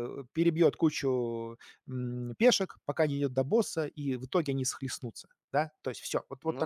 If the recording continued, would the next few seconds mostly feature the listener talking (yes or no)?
no